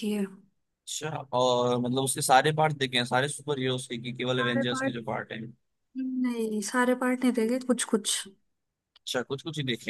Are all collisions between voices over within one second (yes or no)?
yes